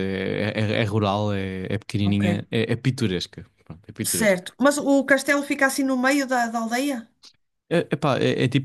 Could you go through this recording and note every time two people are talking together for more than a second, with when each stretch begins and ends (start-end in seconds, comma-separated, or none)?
none